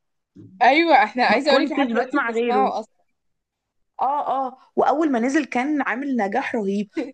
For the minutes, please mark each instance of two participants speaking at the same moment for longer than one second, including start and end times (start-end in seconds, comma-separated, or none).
1.3-2.7